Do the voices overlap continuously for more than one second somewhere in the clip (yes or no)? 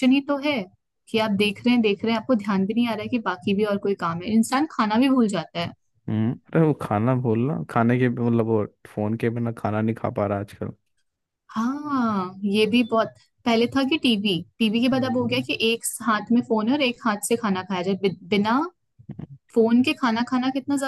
no